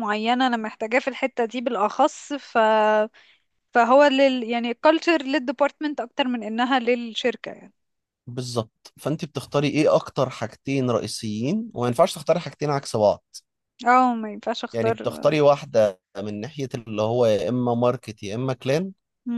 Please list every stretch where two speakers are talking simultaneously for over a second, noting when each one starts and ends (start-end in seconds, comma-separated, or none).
none